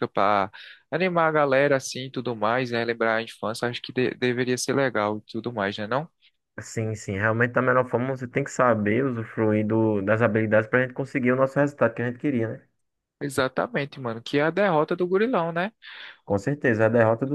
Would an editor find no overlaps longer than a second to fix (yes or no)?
yes